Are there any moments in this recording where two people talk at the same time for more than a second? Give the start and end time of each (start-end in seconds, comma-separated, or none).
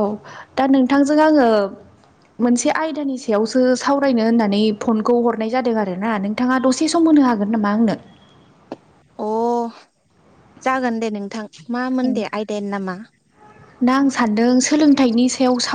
none